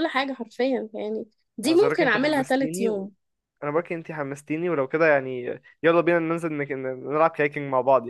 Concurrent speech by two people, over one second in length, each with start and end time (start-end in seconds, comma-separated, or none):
1.6-2.9